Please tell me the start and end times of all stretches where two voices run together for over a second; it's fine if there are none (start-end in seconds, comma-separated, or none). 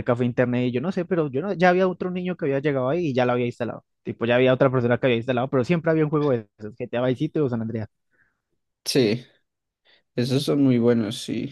none